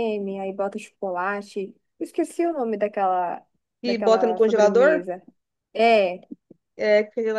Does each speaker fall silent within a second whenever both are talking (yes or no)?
no